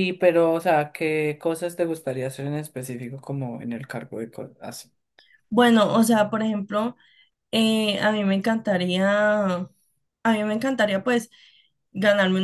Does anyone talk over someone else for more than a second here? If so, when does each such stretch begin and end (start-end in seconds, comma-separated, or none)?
none